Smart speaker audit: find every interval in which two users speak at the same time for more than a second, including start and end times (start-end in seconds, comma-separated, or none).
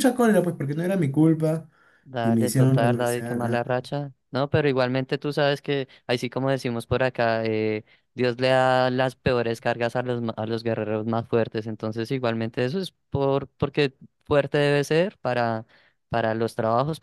2.2-3.8